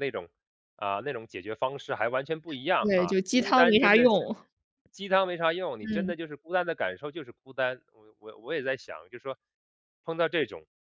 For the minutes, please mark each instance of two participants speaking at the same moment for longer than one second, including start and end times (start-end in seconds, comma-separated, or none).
2.8-4.1